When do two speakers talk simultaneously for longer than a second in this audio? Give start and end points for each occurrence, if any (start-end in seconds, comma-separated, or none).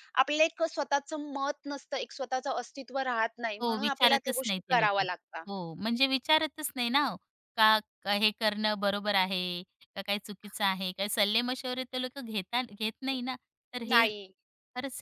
3.6-5.0